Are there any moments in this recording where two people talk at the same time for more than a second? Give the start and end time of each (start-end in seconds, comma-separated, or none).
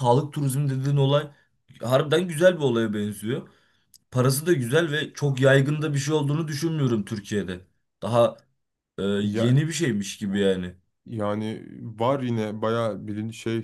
none